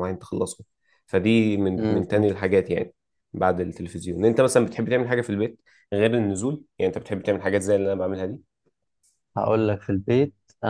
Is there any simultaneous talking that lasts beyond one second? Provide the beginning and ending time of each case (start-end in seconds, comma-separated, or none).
none